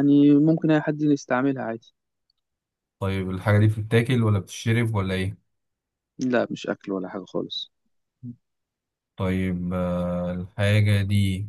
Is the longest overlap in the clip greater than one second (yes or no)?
no